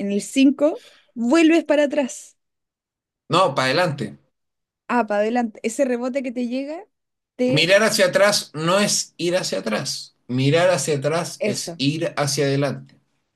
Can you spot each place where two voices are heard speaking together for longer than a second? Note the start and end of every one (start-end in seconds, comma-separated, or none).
none